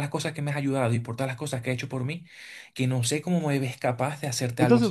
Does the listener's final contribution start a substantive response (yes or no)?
yes